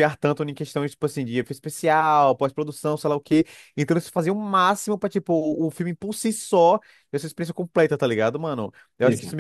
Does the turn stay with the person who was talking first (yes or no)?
yes